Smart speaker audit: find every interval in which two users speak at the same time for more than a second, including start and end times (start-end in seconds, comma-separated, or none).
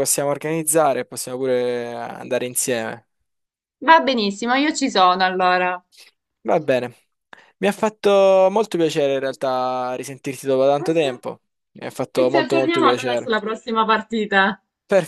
12.1-13.3